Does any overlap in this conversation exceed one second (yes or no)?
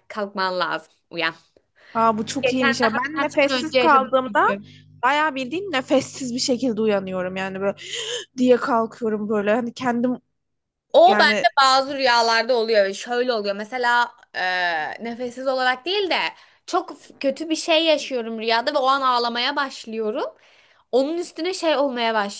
yes